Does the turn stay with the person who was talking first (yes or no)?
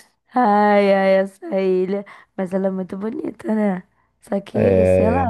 yes